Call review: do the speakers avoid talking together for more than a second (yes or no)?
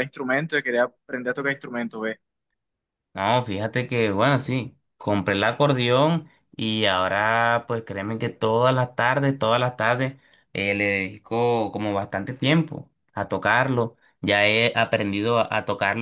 yes